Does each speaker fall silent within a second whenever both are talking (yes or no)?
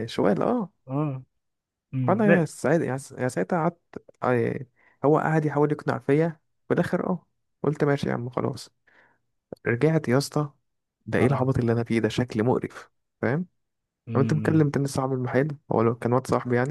yes